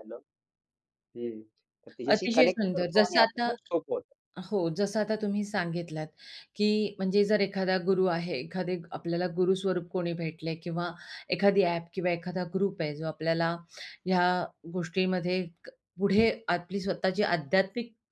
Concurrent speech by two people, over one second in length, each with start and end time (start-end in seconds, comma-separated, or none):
2.1-3.4